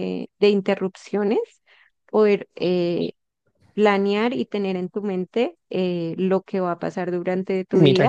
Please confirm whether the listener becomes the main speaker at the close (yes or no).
yes